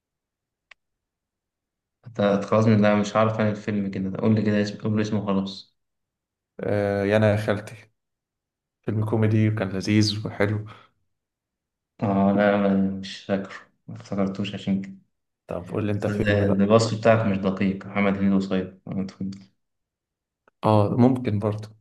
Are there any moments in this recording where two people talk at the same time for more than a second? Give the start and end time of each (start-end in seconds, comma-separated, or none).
none